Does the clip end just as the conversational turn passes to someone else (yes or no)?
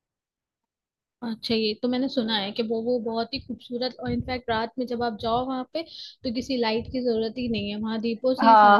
yes